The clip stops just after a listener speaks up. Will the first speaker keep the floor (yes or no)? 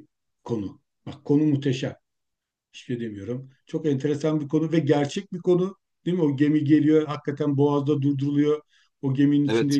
yes